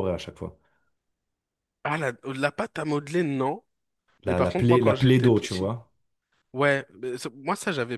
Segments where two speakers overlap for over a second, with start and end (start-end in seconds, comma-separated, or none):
4.3-5.7